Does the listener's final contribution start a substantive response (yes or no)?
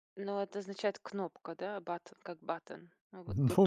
yes